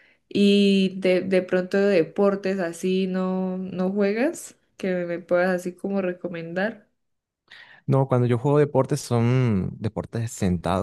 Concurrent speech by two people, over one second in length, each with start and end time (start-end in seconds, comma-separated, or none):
none